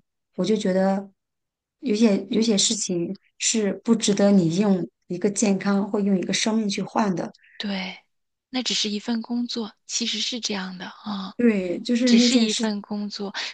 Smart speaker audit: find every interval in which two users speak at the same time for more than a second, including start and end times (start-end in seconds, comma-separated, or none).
none